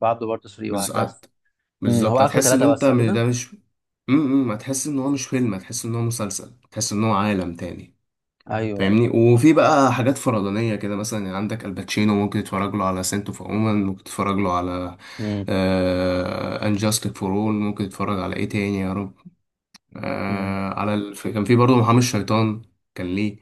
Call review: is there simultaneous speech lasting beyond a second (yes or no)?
yes